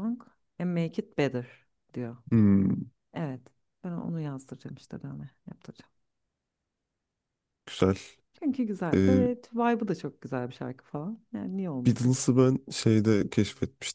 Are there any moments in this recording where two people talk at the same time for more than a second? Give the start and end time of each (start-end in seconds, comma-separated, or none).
none